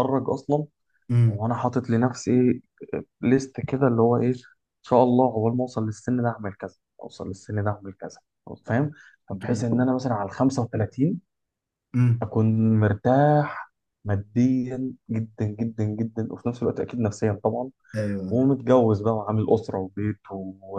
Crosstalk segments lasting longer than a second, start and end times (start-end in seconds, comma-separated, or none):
none